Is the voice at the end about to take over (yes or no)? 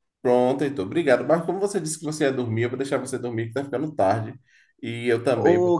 no